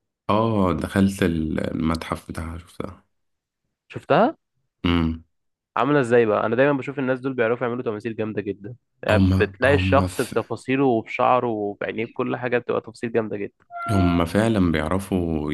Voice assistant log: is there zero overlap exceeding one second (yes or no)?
no